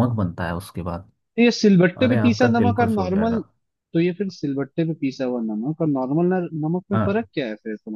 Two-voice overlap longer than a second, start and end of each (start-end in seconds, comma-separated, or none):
2.0-3.4